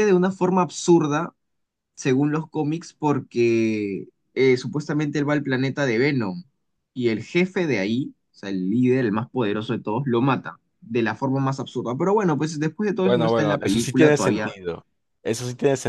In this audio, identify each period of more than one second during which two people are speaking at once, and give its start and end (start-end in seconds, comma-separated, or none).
13.0-14.6